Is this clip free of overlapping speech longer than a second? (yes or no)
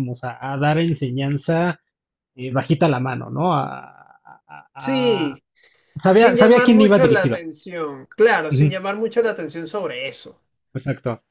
no